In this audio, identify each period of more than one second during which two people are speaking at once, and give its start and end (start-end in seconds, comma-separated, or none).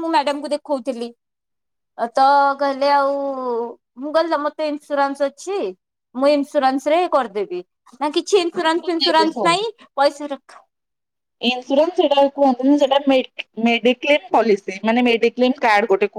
none